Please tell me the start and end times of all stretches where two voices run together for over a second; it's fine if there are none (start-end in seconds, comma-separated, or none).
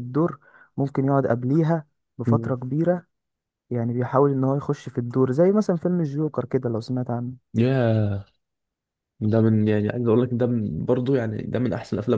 none